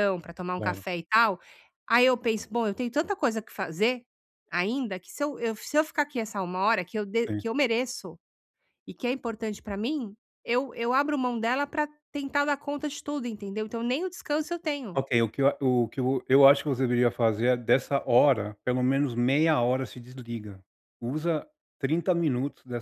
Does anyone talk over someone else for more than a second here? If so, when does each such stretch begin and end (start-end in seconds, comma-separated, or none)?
none